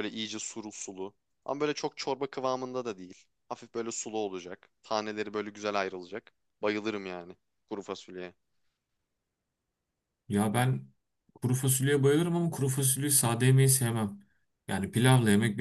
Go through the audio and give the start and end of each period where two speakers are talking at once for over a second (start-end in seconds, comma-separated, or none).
none